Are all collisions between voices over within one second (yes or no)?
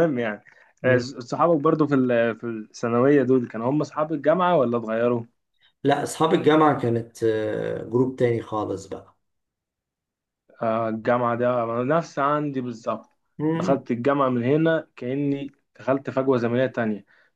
yes